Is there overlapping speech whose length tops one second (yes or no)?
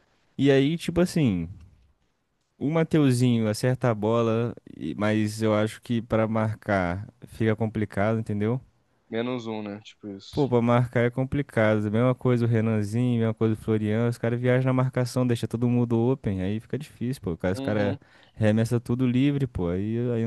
no